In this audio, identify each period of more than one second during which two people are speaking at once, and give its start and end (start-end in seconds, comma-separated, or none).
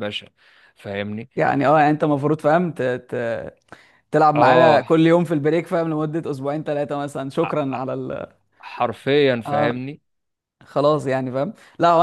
none